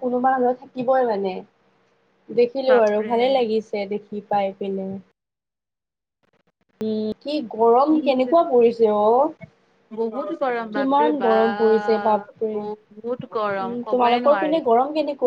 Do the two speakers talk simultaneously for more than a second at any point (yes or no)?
yes